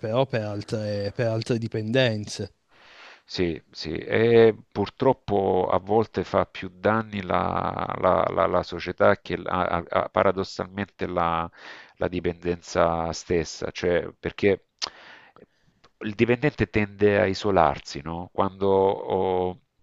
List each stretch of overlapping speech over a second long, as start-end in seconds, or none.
none